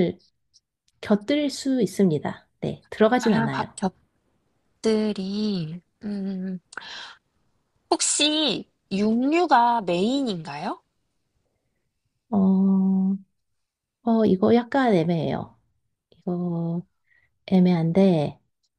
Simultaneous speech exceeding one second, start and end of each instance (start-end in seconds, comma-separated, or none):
none